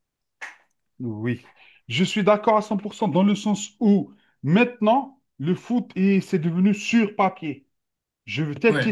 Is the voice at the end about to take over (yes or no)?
no